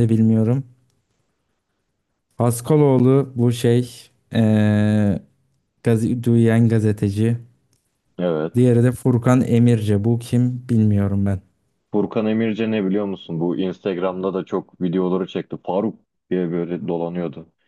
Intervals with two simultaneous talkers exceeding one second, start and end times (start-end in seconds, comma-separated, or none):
none